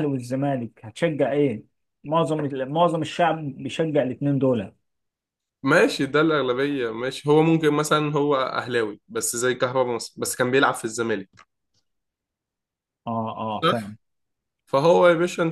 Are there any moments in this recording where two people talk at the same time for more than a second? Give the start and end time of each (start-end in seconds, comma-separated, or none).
none